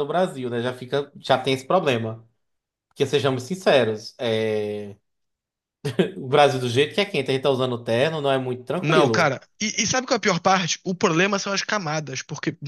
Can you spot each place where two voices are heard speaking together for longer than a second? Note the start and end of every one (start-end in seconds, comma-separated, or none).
none